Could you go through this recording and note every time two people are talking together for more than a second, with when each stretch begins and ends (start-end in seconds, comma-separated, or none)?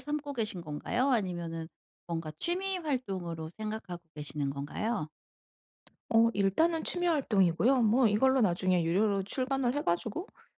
none